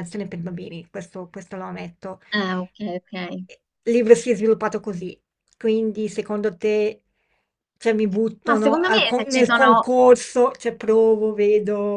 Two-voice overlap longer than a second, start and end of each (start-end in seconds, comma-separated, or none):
8.4-9.9